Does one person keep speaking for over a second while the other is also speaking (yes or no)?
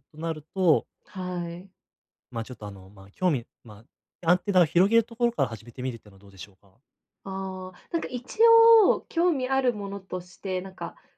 no